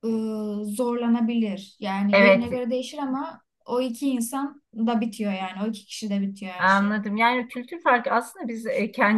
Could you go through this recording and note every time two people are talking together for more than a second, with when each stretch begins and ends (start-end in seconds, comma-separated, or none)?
none